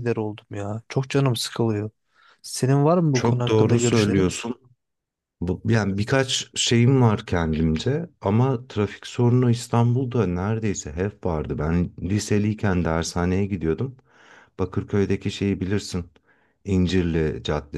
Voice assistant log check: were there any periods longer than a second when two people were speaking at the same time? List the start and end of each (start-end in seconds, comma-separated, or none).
3.1-4.3